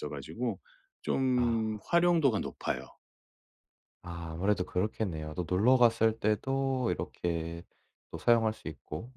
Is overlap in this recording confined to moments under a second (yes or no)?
yes